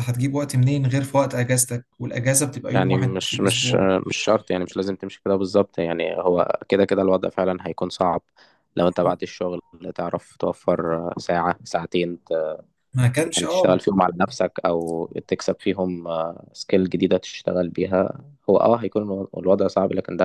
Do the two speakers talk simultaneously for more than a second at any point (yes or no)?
yes